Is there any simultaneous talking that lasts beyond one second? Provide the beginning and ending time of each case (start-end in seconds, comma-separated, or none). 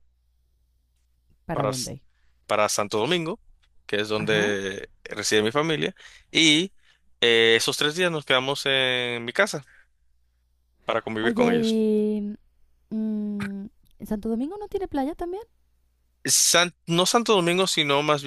none